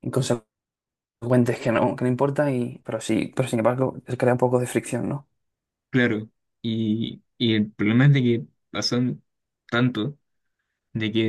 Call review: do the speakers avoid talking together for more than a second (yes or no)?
yes